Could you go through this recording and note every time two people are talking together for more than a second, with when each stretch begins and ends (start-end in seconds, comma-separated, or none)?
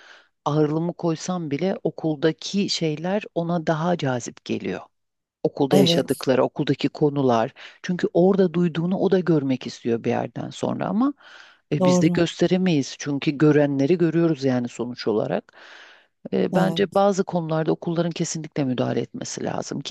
none